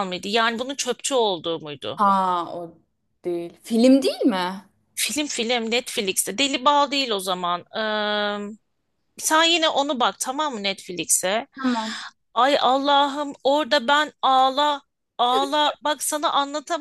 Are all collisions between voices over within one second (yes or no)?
yes